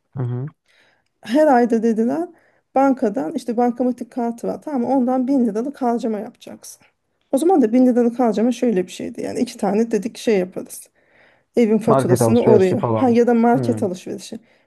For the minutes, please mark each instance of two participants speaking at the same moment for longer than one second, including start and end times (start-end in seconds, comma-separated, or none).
11.9-13.8